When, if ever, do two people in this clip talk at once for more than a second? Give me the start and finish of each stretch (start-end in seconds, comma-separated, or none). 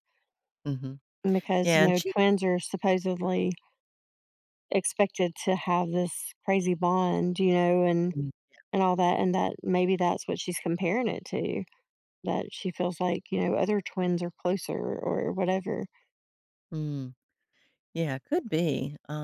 none